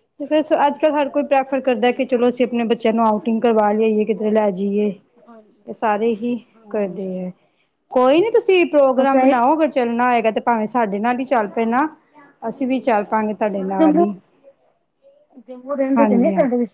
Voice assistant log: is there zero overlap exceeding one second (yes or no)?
no